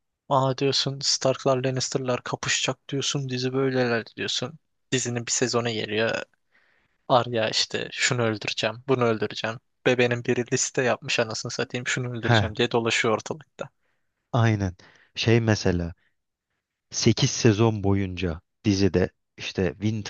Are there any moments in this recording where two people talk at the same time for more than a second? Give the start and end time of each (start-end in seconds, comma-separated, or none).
none